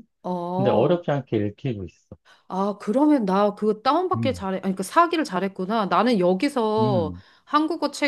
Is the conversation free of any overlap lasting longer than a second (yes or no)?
yes